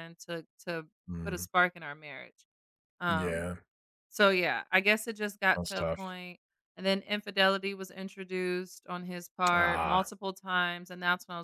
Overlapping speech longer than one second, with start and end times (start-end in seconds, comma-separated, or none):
none